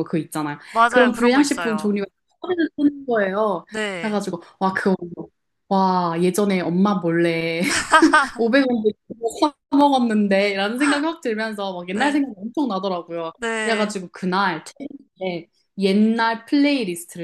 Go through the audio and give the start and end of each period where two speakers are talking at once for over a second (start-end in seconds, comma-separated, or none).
0.7-1.9